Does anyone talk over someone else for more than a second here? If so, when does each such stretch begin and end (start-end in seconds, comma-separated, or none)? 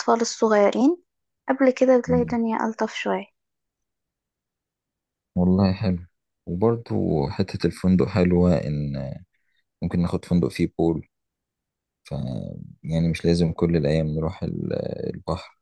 none